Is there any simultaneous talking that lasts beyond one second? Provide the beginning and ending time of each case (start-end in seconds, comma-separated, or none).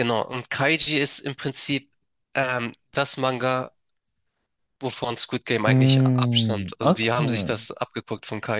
5.6-7.5